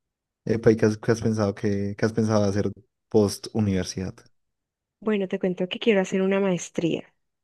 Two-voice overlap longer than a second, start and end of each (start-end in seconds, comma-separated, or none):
none